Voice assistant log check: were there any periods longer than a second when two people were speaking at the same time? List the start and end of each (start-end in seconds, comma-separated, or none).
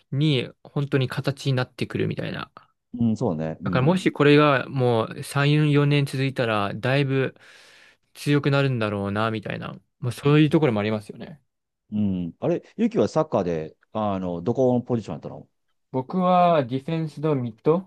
none